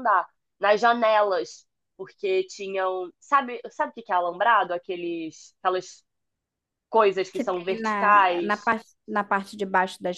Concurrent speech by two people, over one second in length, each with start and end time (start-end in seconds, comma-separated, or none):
7.3-8.7